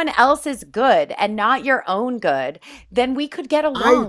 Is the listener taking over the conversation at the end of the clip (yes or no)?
yes